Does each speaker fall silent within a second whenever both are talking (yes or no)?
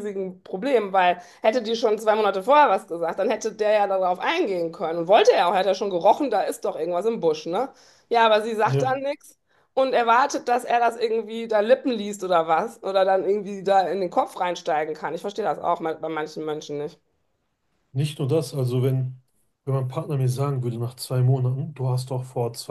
yes